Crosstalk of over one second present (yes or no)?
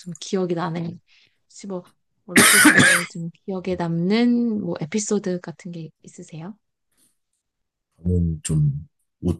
no